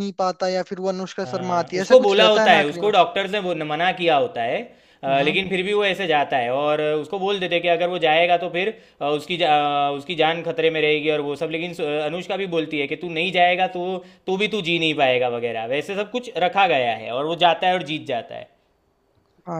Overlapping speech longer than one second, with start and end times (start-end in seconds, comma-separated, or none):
1.3-2.9